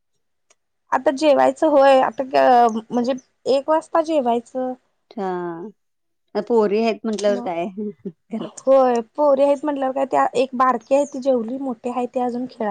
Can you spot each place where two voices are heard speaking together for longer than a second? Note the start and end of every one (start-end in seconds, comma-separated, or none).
none